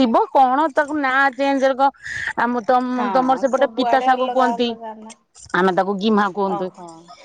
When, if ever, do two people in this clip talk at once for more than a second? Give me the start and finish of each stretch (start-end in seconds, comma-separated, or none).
3.0-4.7